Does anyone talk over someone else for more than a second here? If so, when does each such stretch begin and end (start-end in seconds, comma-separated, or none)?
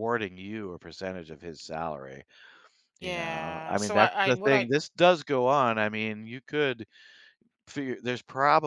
3.0-4.7